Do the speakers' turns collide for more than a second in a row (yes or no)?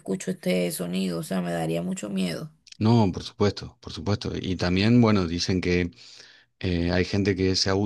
no